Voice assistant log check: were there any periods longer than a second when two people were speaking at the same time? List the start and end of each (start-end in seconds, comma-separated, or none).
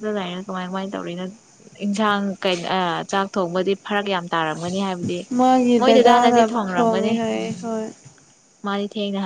5.8-7.6